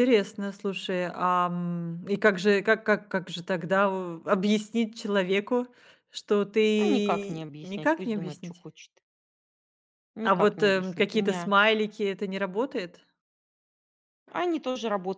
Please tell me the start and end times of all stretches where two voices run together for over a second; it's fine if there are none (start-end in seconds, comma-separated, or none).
6.8-8.7, 10.2-11.5